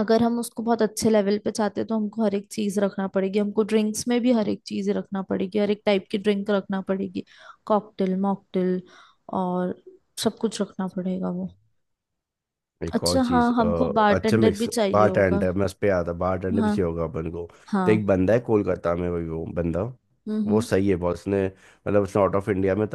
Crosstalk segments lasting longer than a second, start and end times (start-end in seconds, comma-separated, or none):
13.0-15.4